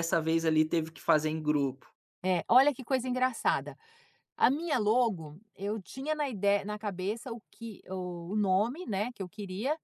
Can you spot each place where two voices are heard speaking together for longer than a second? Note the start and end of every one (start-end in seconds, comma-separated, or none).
none